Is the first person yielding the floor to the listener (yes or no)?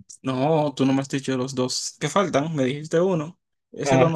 yes